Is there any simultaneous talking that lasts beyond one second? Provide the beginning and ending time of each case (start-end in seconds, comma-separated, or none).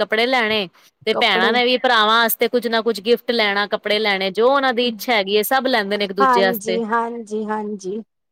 none